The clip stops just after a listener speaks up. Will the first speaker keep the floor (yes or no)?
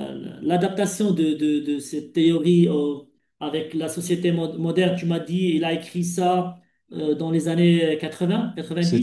no